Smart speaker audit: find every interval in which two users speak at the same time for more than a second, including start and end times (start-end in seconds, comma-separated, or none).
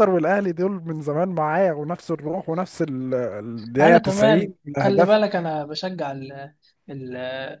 3.8-5.2